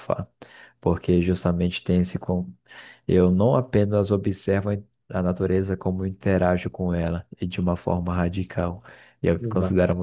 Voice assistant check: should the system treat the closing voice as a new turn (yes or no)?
no